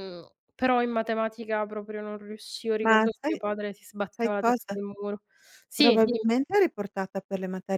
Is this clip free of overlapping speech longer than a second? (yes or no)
yes